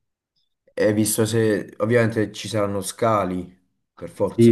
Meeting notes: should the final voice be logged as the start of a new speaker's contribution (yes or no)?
yes